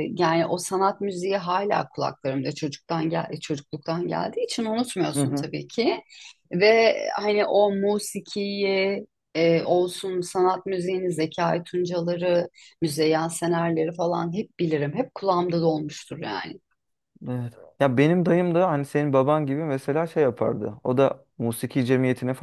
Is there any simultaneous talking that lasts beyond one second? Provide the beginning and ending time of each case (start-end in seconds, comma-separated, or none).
none